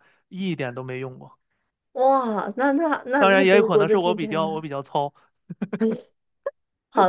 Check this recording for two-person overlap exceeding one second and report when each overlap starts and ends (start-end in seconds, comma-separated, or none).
3.2-4.6